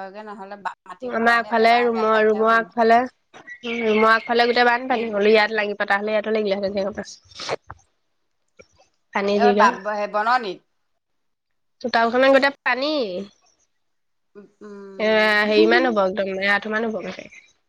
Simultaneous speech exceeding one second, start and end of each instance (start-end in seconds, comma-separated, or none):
1.2-2.8